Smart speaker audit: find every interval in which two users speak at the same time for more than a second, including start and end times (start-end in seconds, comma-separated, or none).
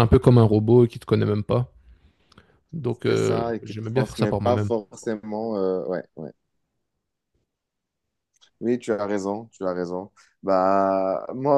3.0-4.7